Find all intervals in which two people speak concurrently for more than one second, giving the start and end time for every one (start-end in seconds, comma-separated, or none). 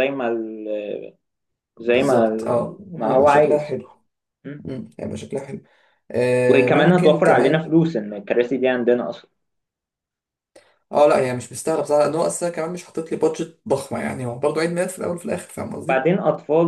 2.5-3.8, 6.5-7.7